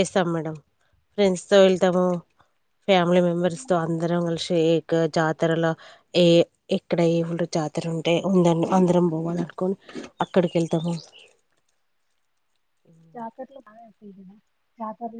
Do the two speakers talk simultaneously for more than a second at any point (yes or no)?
no